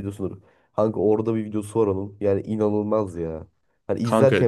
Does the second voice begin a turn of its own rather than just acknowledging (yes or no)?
no